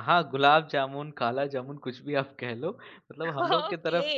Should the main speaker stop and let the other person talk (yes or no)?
yes